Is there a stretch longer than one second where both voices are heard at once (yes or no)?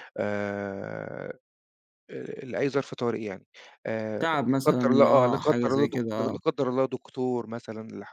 yes